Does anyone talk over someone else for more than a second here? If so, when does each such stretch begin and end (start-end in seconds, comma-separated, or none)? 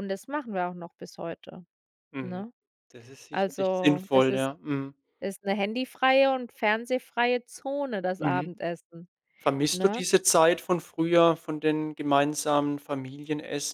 3.3-4.5